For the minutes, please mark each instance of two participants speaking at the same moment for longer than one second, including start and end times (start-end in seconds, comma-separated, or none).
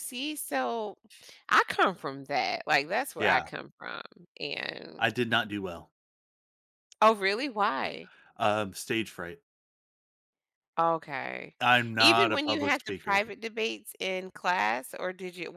12.0-13.2